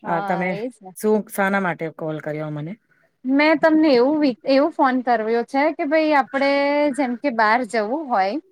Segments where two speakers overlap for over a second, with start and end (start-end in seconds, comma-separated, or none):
none